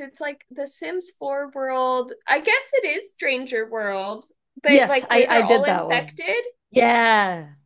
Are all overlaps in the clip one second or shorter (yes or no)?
no